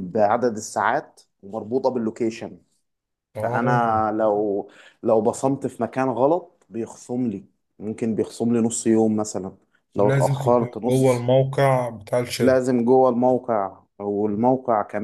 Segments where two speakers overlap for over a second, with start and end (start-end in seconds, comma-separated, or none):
10.0-11.3